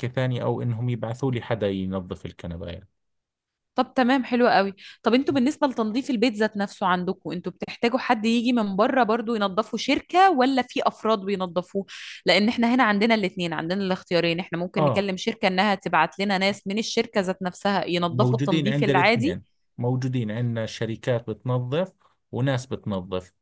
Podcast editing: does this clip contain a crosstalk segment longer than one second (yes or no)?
yes